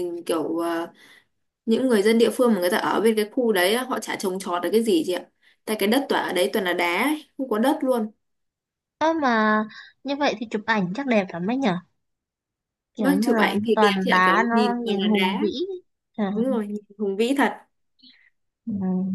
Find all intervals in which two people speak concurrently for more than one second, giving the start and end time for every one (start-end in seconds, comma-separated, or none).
13.0-15.4